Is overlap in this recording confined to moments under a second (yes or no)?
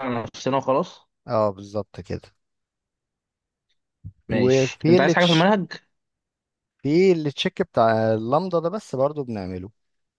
no